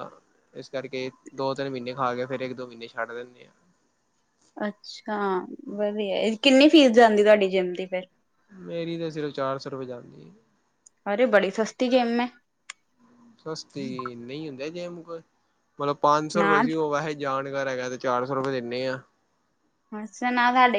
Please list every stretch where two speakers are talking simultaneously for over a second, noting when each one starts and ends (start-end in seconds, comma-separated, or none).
none